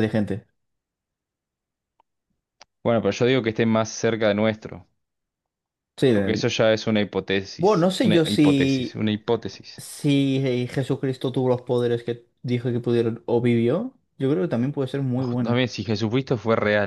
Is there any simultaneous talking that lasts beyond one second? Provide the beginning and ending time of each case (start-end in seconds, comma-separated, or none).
7.6-9.0